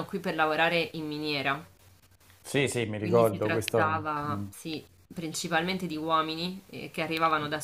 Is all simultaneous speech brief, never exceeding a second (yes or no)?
no